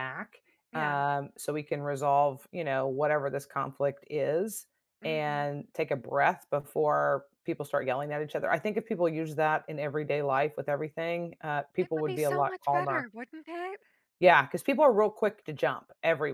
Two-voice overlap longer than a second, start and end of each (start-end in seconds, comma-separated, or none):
11.8-13.1